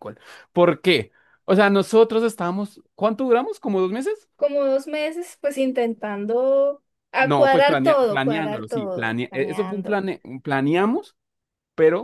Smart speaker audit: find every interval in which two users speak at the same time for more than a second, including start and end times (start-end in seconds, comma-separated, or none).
7.2-10.0